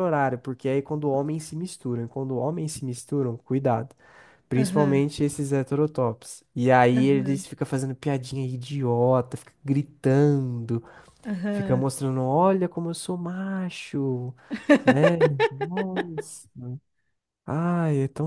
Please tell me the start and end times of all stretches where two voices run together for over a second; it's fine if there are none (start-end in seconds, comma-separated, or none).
none